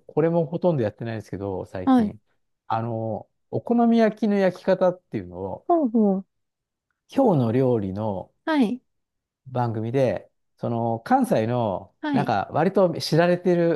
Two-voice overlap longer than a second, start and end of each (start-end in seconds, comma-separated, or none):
none